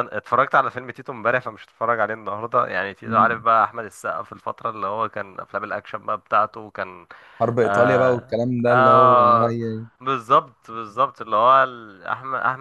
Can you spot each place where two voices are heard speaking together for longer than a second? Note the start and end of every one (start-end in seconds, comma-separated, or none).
7.6-9.6